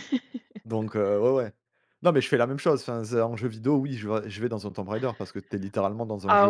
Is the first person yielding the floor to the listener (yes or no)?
yes